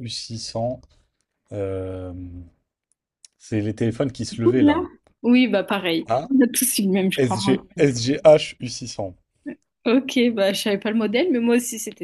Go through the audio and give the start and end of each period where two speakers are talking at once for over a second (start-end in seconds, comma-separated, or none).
none